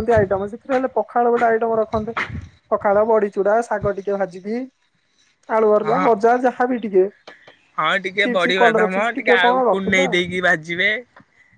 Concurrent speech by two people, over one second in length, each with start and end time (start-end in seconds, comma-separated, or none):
8.2-10.1